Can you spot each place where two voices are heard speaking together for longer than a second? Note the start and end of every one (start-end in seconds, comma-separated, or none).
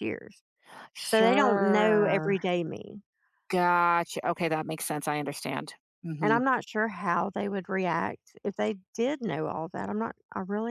1.0-2.4